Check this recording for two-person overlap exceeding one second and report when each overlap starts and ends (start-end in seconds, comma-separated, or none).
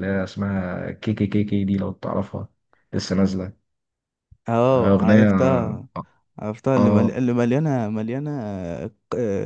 none